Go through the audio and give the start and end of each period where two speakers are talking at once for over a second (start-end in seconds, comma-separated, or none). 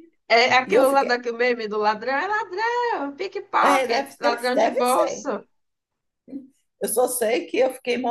3.6-5.3